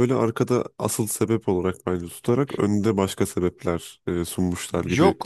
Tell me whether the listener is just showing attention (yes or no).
no